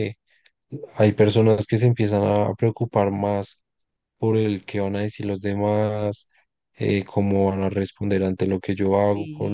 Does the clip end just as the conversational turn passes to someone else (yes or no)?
yes